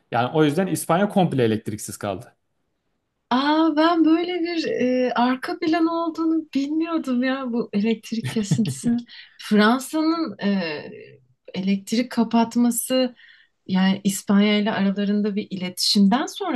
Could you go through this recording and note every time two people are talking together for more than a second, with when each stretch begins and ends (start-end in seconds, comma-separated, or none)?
none